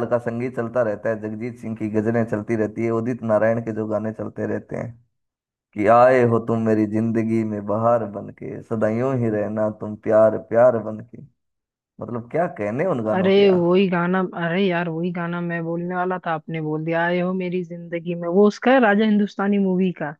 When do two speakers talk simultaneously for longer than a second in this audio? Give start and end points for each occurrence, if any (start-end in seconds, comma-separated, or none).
none